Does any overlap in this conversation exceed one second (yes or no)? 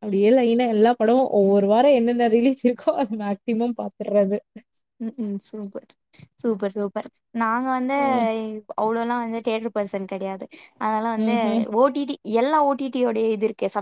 no